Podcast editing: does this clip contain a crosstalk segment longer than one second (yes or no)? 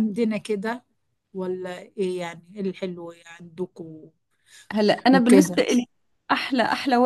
no